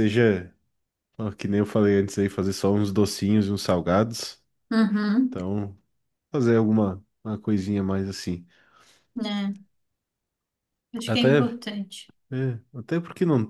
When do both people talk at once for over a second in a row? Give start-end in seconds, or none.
none